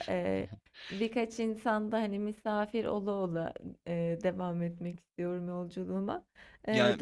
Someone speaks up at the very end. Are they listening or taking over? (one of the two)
taking over